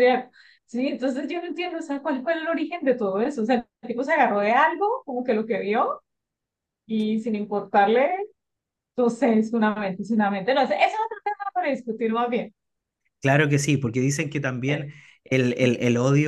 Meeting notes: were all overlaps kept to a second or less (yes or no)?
yes